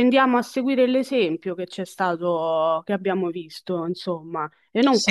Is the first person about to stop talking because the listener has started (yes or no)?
no